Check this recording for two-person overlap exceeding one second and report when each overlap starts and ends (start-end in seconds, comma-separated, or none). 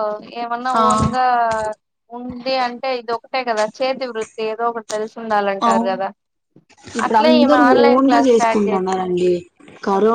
7.1-9.0